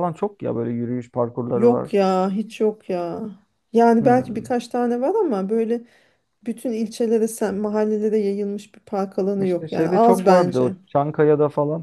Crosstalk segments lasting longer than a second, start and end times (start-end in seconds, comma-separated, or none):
9.4-10.8